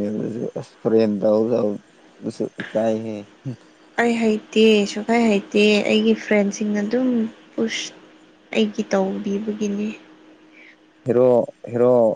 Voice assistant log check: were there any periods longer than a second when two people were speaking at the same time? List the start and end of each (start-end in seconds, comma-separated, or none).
none